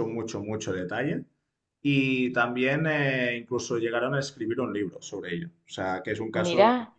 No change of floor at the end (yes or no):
yes